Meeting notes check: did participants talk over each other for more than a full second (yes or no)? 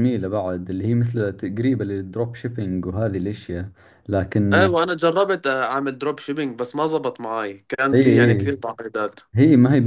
no